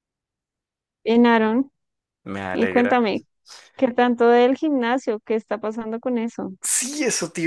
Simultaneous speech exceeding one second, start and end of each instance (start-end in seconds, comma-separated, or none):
none